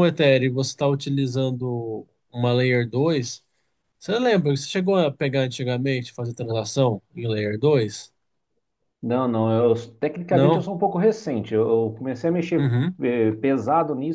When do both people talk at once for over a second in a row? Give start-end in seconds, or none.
none